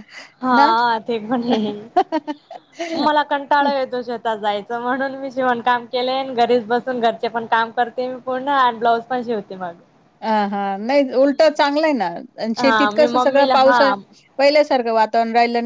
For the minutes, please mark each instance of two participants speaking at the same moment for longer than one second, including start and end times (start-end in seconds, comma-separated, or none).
12.6-13.9